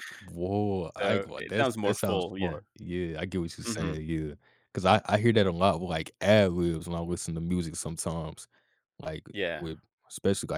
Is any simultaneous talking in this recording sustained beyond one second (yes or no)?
yes